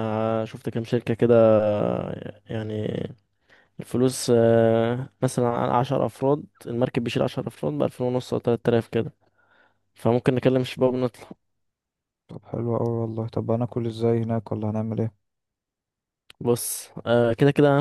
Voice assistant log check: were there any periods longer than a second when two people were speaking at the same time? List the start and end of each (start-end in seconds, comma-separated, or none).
none